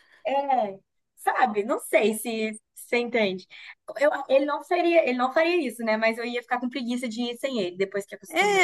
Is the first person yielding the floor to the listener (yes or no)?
yes